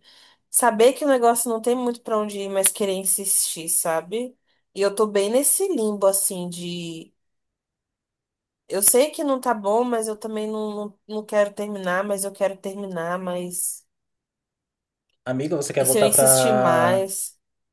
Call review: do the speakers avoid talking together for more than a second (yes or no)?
no